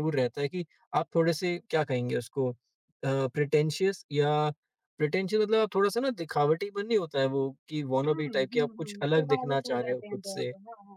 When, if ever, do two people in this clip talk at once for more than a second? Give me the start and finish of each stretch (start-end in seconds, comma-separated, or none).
8.1-10.5